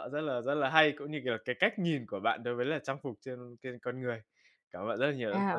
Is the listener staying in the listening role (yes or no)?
no